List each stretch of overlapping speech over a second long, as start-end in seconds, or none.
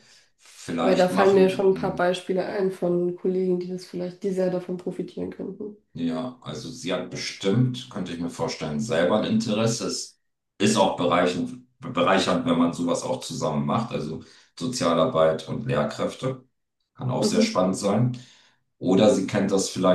0.8-2.0